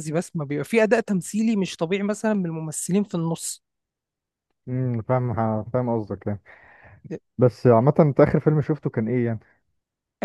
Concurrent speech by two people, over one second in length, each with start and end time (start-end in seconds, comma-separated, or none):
none